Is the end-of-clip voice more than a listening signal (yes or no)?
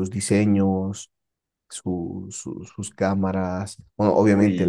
no